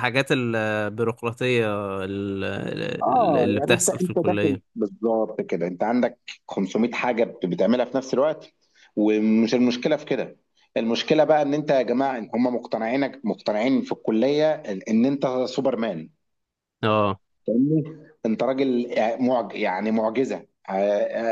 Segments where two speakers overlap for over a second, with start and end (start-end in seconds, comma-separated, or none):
3.0-4.6